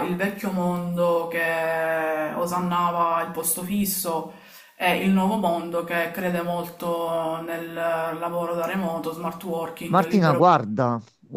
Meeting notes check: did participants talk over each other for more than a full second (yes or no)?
no